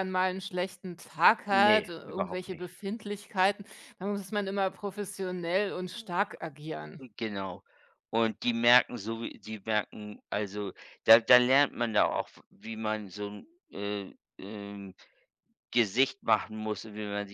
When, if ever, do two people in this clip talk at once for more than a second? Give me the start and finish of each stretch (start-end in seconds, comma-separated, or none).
1.5-2.7